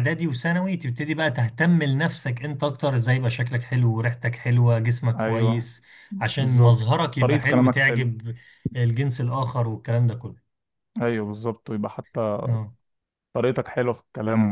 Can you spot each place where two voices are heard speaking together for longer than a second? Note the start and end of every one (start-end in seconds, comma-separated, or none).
6.4-8.1